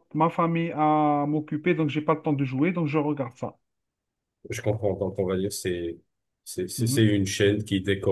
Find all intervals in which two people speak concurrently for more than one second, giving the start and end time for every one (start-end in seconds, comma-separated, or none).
none